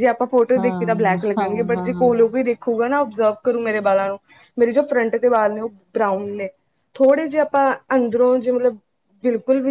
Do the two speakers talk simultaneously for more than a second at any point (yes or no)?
yes